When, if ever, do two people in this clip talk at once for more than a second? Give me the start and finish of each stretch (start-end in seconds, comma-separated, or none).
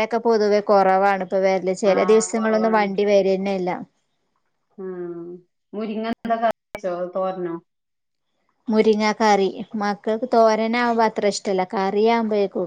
none